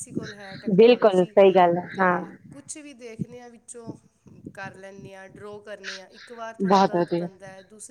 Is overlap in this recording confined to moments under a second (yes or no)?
yes